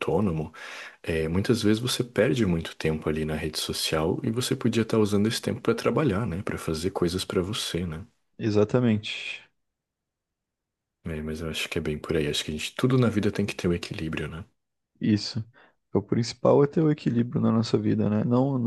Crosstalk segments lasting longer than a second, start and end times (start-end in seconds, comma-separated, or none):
none